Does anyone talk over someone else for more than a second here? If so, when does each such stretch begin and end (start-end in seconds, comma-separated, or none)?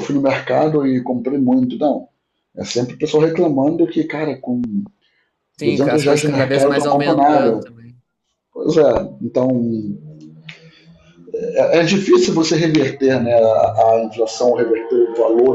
5.6-7.7